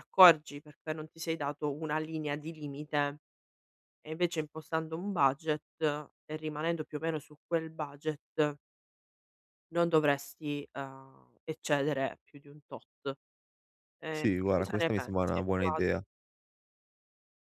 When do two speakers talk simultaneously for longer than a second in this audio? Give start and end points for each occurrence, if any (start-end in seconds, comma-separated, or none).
14.1-15.8